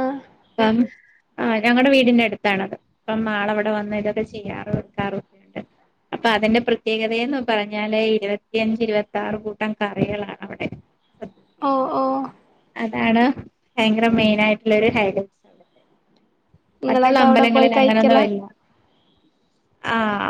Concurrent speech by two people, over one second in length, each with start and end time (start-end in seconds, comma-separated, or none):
16.9-18.2